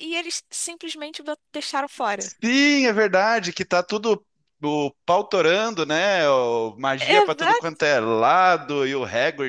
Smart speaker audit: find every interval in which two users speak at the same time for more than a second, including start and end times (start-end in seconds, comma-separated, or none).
none